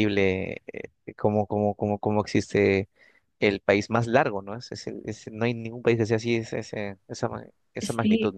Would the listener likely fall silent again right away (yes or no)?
no